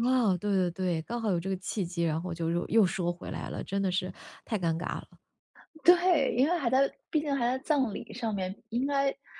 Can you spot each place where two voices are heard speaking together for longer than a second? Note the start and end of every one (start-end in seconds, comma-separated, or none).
none